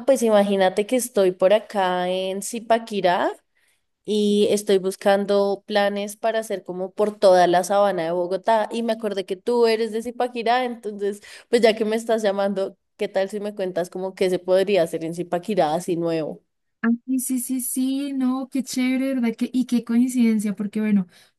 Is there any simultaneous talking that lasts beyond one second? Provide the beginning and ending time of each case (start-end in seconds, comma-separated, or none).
none